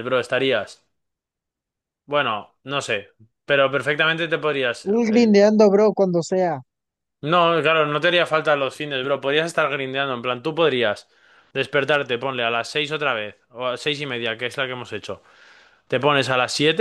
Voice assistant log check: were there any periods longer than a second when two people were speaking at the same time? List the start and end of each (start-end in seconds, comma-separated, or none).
none